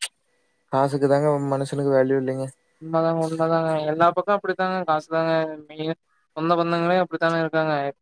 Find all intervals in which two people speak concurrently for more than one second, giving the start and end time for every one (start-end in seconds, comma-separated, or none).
none